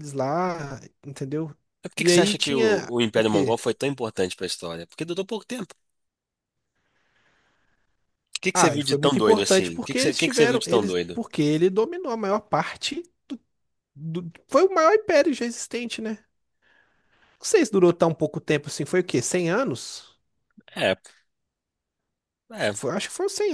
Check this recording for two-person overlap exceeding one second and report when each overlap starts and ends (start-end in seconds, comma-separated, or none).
2.0-3.6, 8.5-11.2